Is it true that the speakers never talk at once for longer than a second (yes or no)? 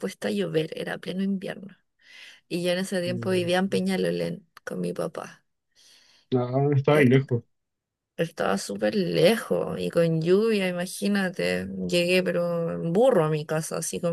yes